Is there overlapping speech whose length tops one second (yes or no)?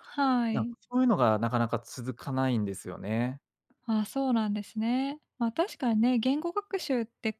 no